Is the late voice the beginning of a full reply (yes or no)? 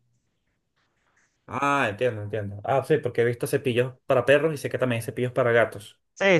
yes